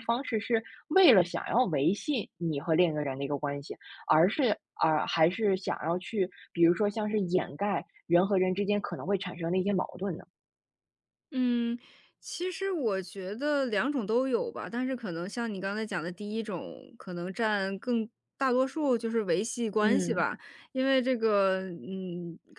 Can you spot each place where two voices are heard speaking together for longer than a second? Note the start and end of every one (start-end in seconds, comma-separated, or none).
none